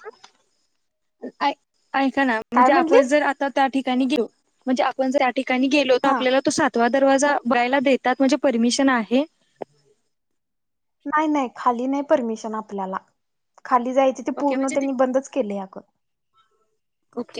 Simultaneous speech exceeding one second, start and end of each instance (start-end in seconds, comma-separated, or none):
none